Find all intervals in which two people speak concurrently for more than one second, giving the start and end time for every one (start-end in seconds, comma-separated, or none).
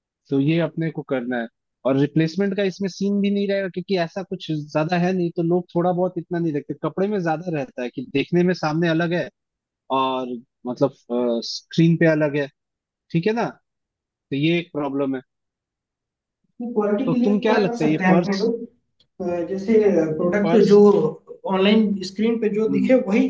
17.1-18.5